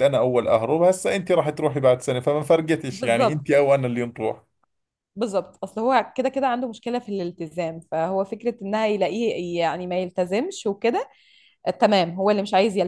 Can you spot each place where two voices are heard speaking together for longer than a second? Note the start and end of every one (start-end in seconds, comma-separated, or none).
none